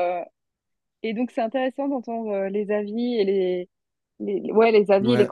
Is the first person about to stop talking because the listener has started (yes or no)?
no